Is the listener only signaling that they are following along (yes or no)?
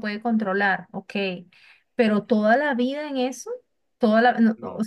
no